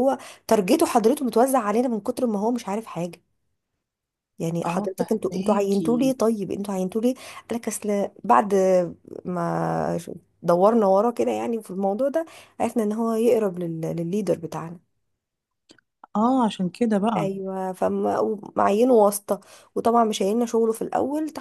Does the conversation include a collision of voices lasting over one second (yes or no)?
yes